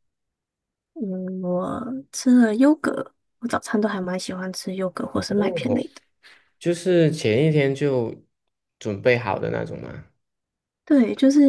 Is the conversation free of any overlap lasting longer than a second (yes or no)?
yes